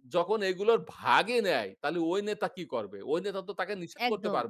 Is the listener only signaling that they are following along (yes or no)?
yes